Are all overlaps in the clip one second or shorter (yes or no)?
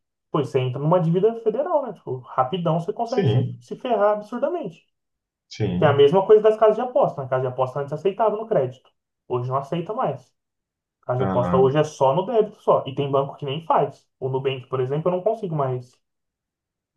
yes